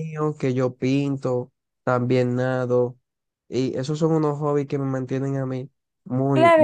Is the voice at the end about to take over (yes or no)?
yes